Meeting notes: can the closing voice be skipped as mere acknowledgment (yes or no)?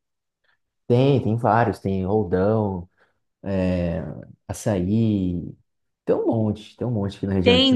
no